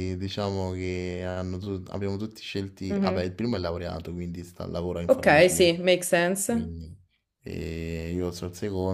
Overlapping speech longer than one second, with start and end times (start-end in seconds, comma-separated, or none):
none